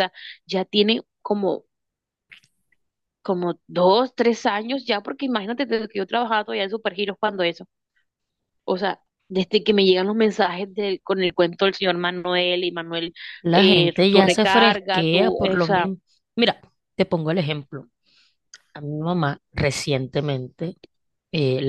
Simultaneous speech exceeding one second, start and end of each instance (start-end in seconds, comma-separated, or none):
13.5-15.9